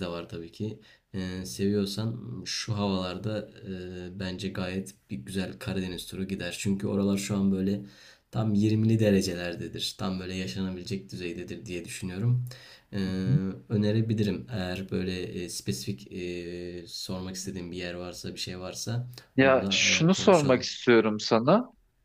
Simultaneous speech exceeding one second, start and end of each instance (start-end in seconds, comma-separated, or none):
19.4-20.7